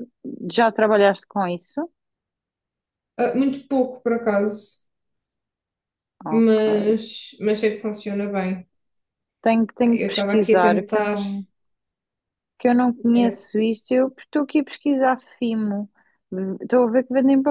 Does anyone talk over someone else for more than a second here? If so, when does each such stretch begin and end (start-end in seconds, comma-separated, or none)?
9.9-11.2